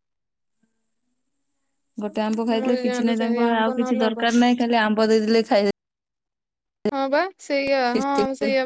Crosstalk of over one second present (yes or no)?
yes